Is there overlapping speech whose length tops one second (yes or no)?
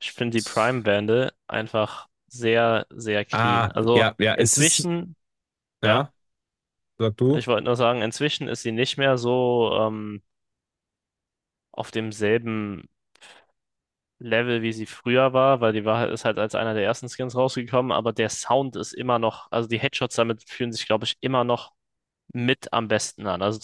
yes